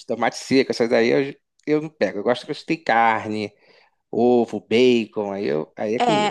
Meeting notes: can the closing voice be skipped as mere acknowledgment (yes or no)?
no